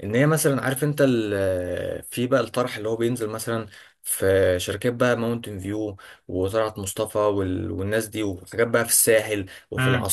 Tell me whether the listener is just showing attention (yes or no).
no